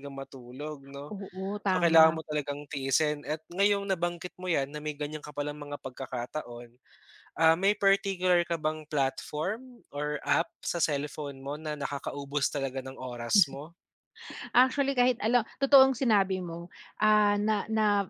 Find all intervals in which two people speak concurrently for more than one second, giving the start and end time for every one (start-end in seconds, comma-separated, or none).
none